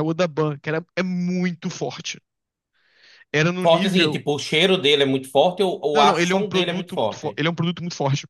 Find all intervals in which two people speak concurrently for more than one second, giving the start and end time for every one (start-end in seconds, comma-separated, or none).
5.9-7.4